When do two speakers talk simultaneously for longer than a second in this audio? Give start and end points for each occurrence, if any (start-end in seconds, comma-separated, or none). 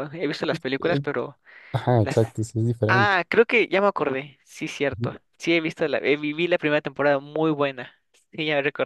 none